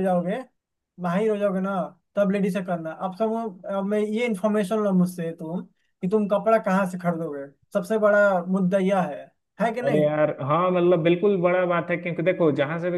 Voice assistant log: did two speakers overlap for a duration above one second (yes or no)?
no